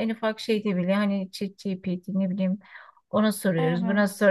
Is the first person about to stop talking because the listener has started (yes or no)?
no